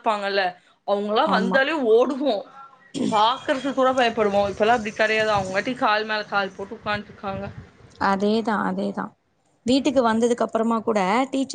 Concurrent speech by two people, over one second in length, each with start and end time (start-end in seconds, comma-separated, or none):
none